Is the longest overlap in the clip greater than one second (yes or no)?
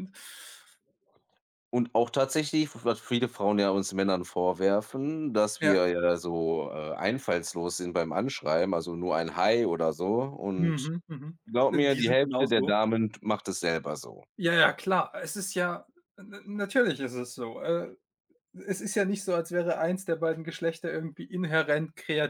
yes